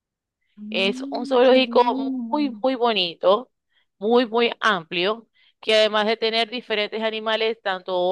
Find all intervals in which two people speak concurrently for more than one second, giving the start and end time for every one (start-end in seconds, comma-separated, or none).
0.7-2.5